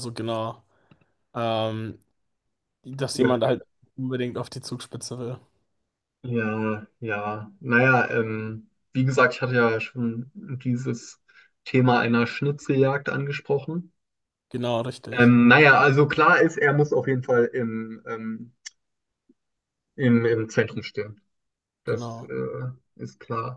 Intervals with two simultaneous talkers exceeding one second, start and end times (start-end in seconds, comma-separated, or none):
none